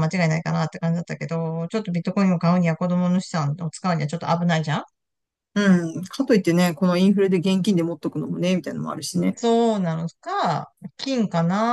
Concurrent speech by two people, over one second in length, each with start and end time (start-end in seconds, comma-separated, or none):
none